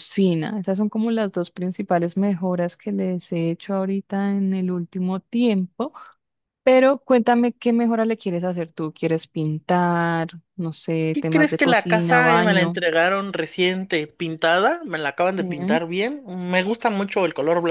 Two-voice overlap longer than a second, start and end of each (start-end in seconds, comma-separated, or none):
11.1-12.8